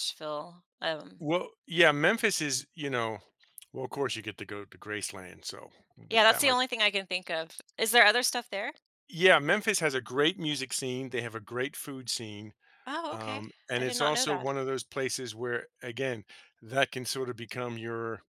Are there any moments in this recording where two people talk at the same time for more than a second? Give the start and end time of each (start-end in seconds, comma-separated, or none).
13.1-14.5